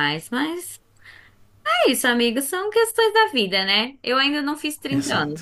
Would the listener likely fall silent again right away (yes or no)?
yes